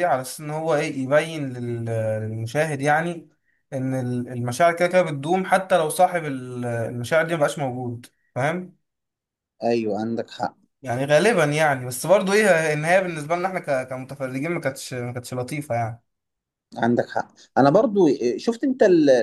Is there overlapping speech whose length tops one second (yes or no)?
no